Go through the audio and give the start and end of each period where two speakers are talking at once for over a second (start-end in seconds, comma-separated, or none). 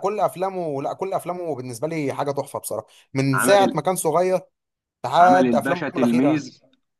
5.2-6.5